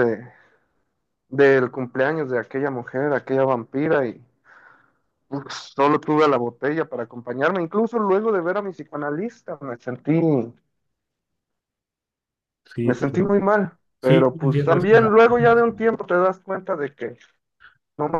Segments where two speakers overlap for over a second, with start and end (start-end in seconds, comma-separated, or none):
14.0-15.8